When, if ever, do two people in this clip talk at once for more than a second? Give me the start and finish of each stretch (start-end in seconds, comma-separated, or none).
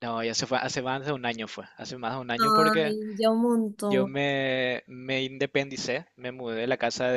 none